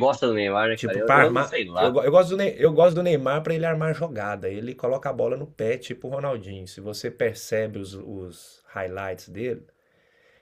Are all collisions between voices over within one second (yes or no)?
no